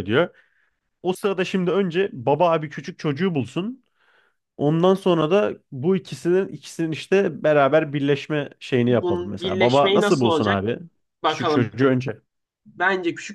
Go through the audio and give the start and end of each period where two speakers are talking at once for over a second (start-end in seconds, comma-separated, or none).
8.9-10.6